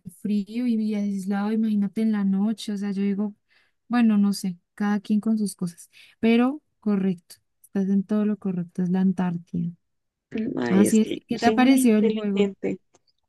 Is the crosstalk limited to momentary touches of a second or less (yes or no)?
no